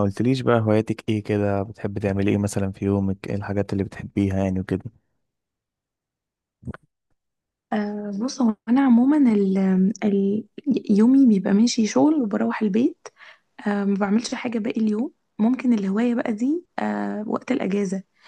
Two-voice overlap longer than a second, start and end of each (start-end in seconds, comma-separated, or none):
none